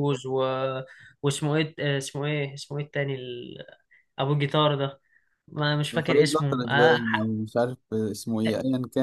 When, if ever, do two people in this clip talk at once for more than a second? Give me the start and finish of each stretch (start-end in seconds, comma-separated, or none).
6.1-7.3